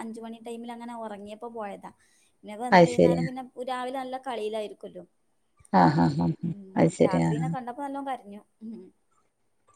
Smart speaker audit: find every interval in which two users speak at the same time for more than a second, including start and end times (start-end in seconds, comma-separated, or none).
none